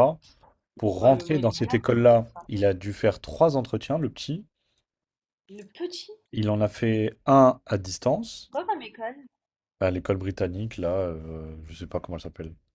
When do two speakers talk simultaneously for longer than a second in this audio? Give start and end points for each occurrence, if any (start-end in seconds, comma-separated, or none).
1.0-2.5